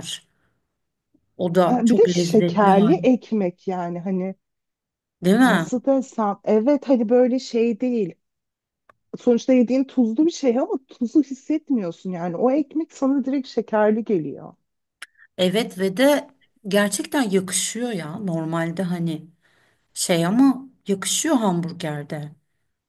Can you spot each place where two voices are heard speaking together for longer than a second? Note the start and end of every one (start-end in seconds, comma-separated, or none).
1.6-3.1